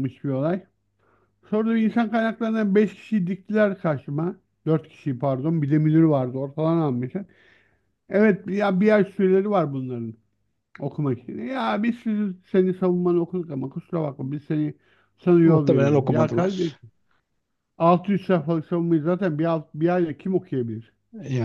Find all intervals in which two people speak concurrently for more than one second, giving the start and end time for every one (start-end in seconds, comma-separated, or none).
15.4-16.7